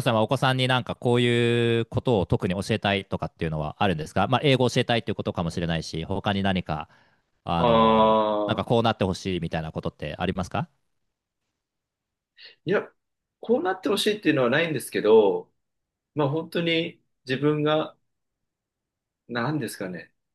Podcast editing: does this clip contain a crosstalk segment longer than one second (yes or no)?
no